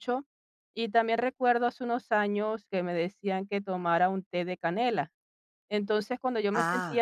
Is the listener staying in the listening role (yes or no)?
yes